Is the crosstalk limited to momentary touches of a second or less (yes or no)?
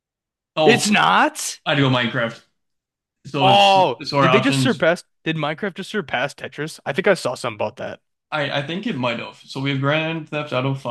no